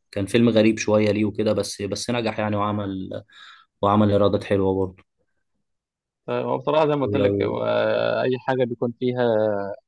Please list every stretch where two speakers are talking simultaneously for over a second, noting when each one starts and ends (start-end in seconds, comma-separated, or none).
none